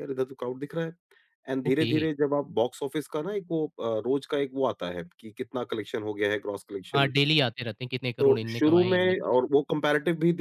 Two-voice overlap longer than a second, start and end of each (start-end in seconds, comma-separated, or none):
8.2-9.6